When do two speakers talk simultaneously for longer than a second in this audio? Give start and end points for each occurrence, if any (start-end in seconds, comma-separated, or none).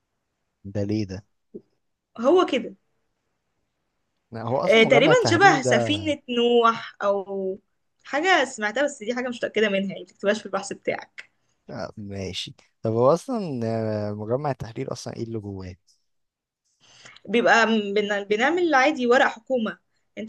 4.7-6.0